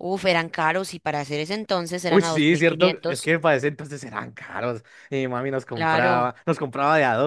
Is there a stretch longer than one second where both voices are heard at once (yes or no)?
yes